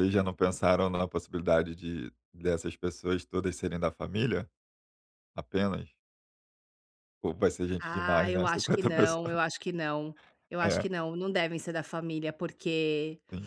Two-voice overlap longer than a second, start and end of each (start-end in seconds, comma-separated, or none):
7.8-9.4